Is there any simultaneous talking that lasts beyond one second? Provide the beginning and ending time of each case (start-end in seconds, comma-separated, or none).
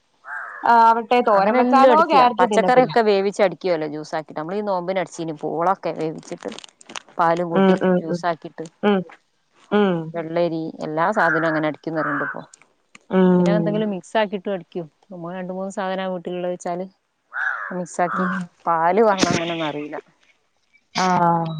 1.4-2.9